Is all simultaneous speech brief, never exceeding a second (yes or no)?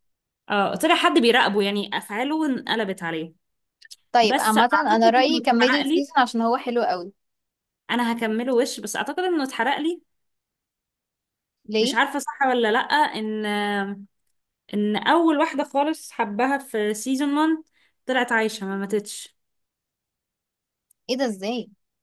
no